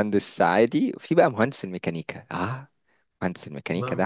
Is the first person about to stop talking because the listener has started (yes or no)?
yes